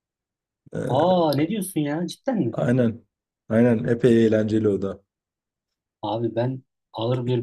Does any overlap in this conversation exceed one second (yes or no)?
no